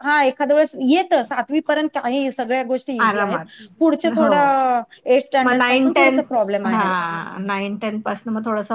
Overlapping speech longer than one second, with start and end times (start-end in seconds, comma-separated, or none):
none